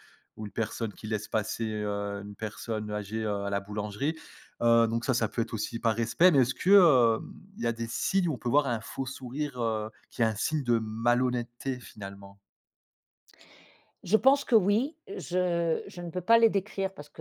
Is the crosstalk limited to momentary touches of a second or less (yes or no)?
yes